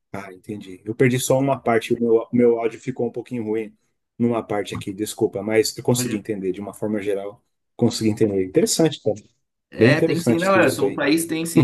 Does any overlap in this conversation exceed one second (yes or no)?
yes